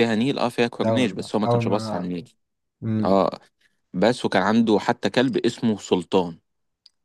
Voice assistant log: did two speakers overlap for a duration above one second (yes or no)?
yes